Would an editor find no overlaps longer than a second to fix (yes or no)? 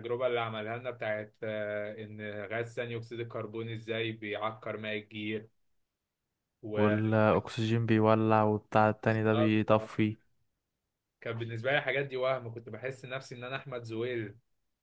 yes